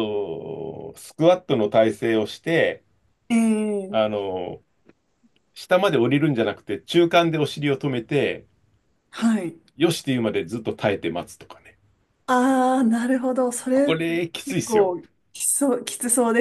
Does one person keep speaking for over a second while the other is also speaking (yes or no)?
yes